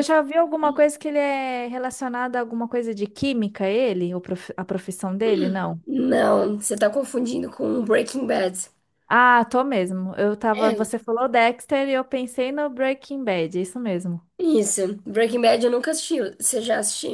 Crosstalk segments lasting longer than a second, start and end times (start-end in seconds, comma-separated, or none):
none